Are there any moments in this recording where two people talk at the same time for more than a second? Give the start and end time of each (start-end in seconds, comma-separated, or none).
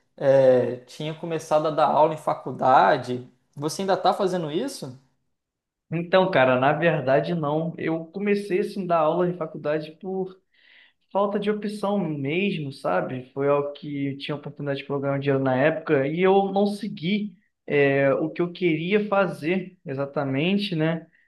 none